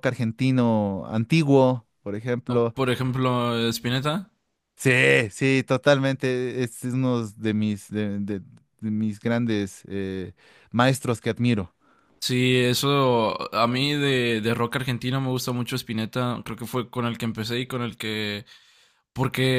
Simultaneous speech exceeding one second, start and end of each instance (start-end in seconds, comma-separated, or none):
none